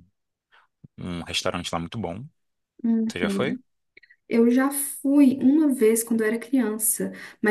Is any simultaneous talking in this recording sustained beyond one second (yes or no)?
no